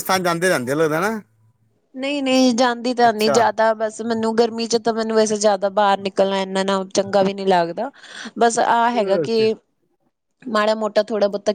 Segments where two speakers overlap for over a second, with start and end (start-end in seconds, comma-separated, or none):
none